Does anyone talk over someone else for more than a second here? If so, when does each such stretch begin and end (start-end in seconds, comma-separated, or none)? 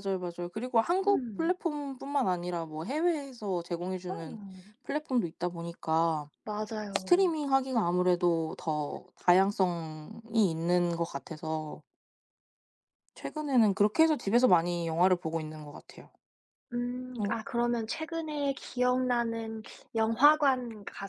none